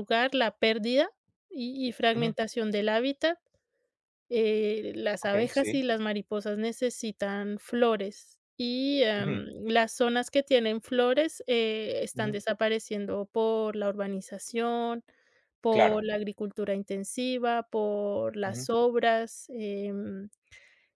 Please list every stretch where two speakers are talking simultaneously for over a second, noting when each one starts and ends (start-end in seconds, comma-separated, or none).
none